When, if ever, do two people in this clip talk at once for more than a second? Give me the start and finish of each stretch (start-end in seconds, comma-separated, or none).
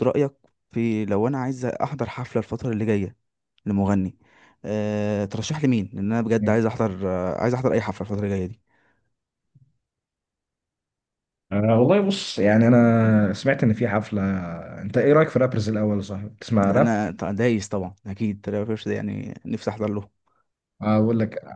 none